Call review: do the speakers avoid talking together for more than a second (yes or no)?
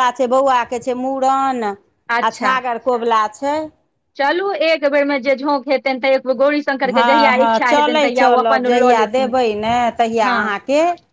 yes